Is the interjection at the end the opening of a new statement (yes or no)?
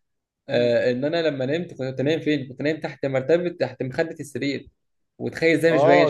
no